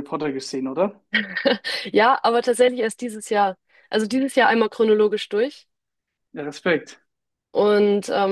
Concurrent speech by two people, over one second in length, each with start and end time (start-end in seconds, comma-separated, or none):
none